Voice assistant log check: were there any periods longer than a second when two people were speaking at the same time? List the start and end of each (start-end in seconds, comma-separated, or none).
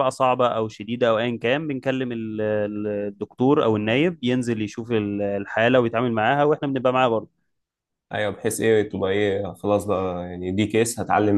none